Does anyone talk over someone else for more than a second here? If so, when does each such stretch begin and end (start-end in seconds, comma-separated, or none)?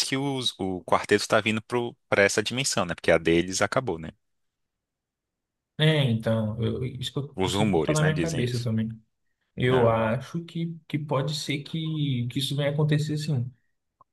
7.3-8.7